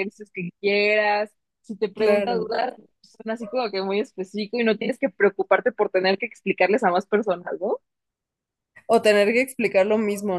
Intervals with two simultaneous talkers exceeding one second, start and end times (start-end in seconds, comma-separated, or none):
none